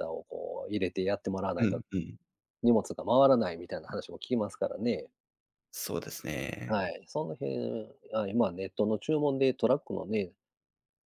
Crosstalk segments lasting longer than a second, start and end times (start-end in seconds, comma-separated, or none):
none